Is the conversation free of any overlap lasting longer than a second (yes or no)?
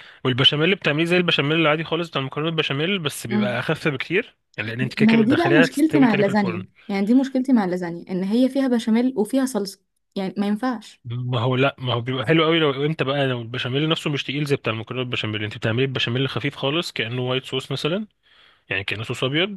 no